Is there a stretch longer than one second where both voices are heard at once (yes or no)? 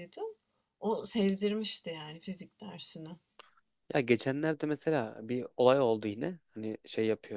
no